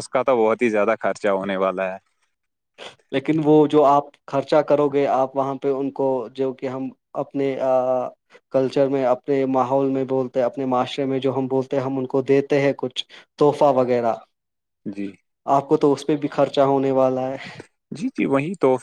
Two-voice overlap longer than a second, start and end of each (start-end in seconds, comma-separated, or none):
none